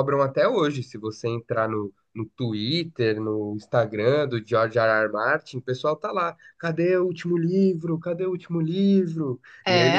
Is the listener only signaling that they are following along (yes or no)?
no